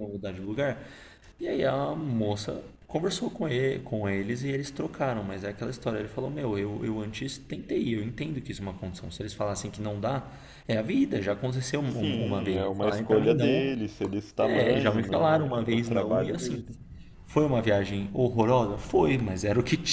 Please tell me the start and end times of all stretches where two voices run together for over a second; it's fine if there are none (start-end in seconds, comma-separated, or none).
11.8-13.7, 14.4-16.6